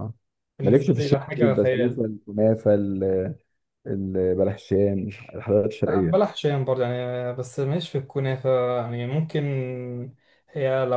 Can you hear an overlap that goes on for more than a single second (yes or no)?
yes